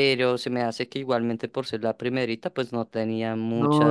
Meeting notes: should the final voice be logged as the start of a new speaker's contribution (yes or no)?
yes